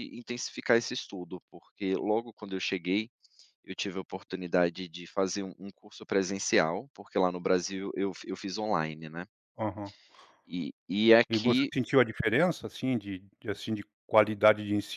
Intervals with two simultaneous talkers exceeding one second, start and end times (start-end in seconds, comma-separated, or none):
none